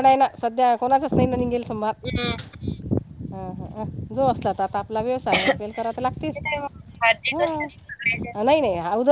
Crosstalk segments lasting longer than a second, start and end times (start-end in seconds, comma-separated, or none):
none